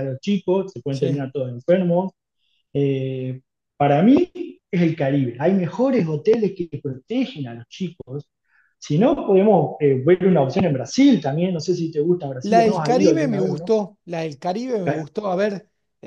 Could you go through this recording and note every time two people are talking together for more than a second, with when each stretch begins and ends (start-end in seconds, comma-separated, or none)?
12.4-13.7